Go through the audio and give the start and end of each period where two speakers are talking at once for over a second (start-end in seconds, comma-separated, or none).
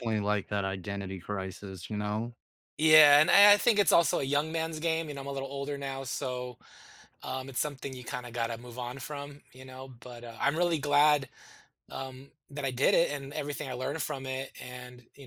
none